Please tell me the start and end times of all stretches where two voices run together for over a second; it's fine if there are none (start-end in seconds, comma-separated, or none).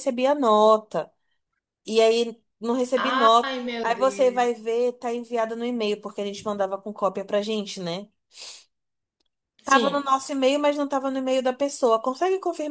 3.0-4.5